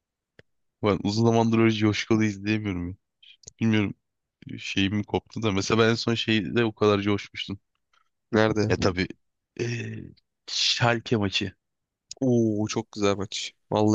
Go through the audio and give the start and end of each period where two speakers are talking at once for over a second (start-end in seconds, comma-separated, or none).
none